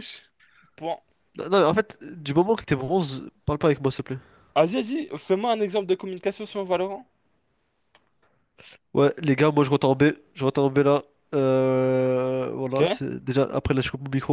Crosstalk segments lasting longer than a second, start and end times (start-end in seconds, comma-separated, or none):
none